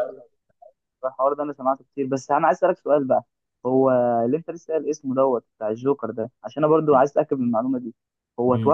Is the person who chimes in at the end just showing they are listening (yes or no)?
yes